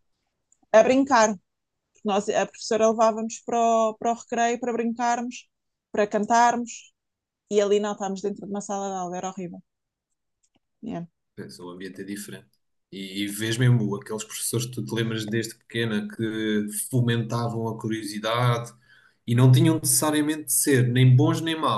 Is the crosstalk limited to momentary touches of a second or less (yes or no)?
yes